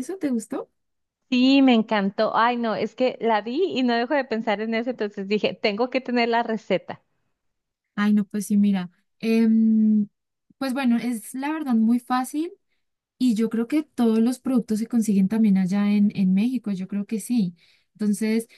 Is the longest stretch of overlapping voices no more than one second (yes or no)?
yes